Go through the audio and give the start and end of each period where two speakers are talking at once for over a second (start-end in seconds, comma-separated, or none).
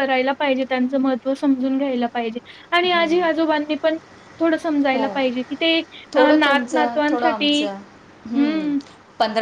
6.1-7.7